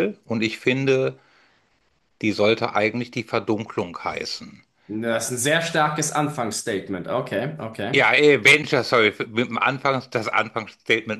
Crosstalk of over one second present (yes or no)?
no